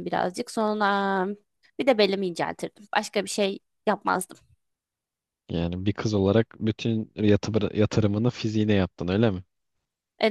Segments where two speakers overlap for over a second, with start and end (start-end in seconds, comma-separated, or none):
none